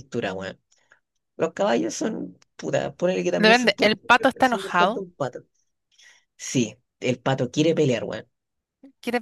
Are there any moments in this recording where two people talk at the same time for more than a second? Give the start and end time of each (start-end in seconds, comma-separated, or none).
3.4-5.0